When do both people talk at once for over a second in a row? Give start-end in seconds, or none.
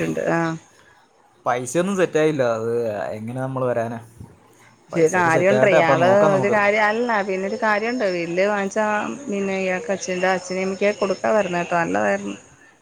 4.9-6.7